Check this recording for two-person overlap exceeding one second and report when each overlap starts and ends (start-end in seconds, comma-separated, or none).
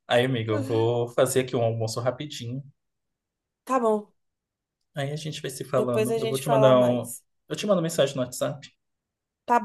5.8-7.2